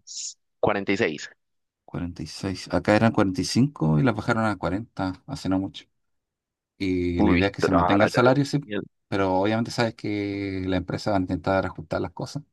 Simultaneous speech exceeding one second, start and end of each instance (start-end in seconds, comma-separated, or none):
7.1-8.6